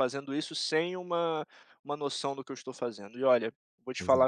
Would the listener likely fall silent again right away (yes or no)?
yes